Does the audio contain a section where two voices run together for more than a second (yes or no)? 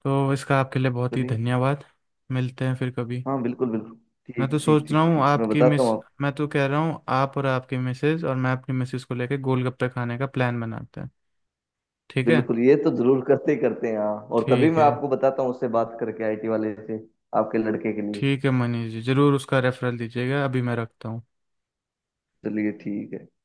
yes